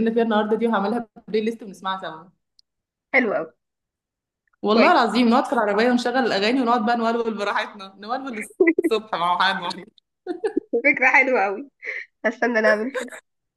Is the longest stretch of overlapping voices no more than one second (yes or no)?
yes